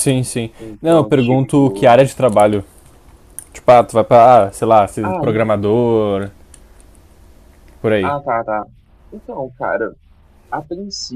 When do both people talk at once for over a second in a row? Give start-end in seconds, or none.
0.6-2.0